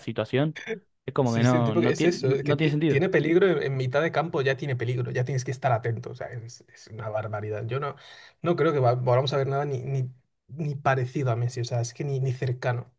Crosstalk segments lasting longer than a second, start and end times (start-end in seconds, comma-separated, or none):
1.2-3.0